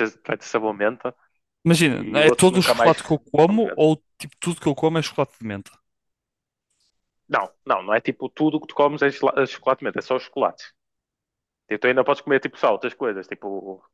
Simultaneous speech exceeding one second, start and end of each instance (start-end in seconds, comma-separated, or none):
1.9-3.9